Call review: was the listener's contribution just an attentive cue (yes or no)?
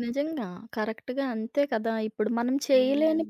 yes